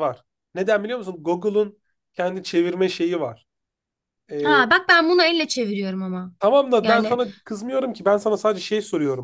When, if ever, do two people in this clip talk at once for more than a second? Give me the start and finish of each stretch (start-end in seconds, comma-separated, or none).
none